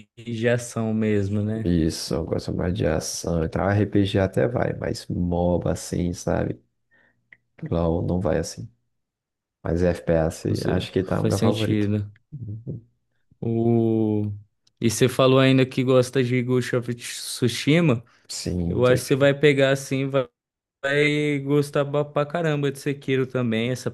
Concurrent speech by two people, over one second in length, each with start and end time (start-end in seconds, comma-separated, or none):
10.4-11.9